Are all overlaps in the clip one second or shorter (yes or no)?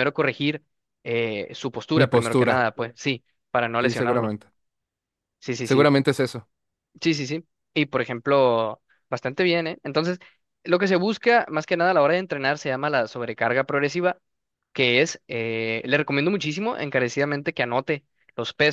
yes